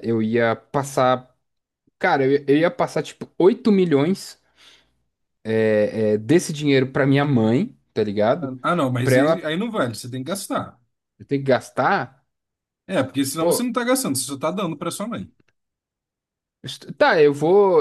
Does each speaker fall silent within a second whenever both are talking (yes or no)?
yes